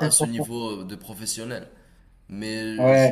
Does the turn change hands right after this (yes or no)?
no